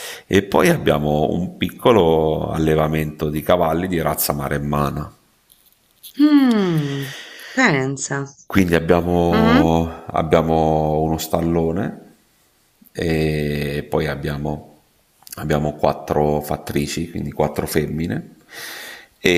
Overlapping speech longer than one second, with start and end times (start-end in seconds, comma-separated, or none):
none